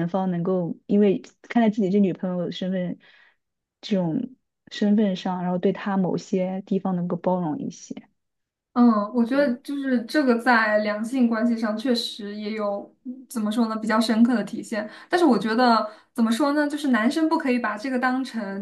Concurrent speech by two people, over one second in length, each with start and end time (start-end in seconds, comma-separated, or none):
none